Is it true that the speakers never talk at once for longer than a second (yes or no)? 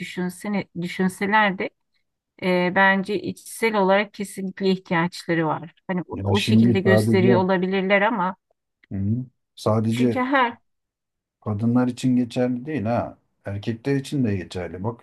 no